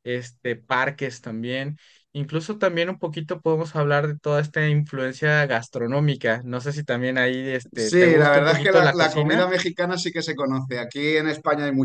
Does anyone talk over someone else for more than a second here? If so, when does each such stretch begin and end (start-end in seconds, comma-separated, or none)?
7.7-9.4